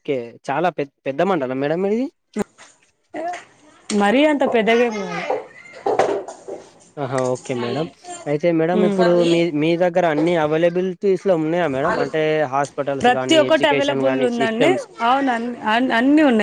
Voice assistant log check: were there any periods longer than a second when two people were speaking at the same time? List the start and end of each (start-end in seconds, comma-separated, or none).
13.2-14.7